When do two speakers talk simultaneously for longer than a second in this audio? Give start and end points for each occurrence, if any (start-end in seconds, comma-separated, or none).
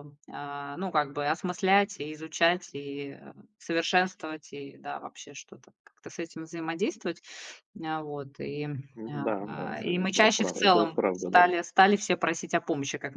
9.1-11.4